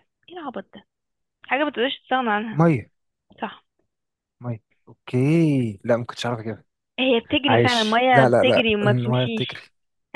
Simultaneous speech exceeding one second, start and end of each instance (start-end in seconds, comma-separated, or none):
7.5-9.6